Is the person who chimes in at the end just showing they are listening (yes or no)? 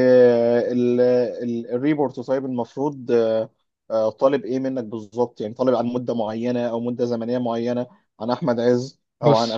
yes